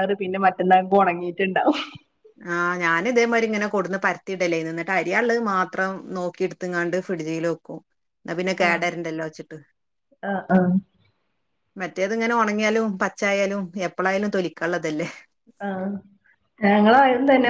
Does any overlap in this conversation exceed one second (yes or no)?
no